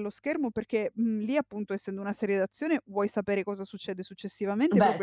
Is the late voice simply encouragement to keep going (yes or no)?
yes